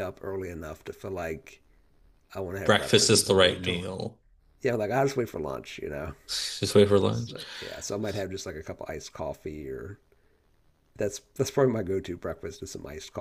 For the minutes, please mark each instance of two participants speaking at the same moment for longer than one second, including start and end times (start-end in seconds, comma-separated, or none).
2.6-3.9